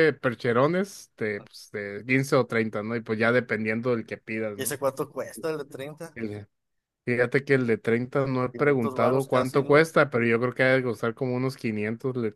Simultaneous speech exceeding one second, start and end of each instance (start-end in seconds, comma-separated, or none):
8.5-9.9